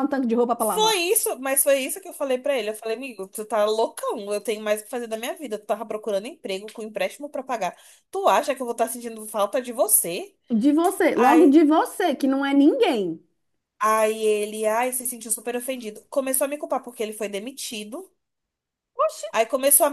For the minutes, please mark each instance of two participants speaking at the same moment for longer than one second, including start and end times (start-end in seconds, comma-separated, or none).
none